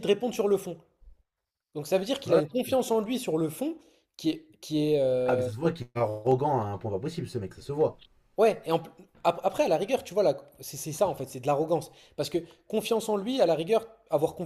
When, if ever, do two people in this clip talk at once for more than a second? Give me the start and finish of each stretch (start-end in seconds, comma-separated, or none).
none